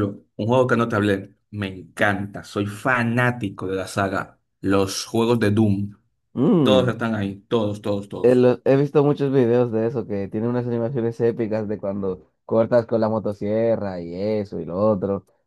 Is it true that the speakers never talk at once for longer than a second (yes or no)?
yes